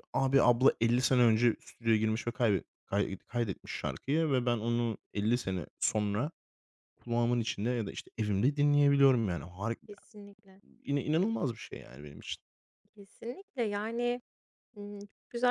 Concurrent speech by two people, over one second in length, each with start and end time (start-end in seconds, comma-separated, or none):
none